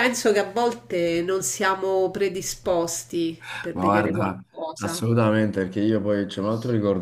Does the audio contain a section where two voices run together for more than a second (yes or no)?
yes